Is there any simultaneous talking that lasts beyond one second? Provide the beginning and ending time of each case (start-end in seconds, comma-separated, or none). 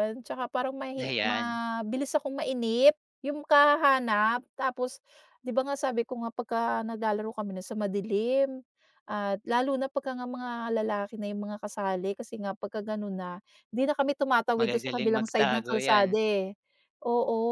14.6-16.1